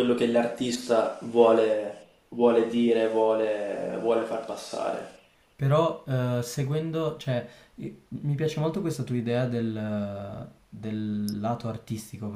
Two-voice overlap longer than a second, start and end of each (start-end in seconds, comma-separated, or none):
none